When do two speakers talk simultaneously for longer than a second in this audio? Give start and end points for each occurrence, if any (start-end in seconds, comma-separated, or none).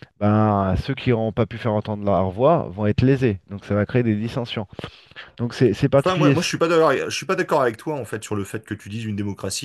none